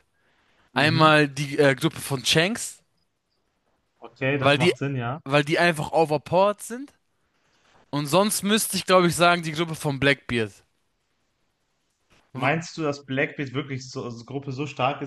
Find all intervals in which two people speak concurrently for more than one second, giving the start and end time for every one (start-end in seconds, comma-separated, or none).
none